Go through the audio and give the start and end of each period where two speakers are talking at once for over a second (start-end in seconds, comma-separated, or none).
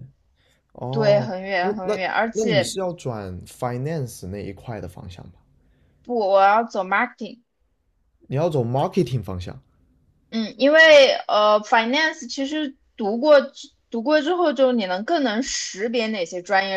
0.9-2.8